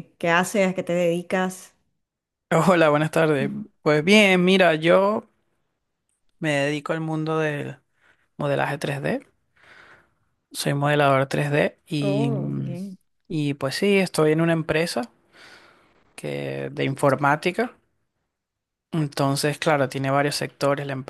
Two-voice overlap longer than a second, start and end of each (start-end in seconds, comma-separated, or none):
none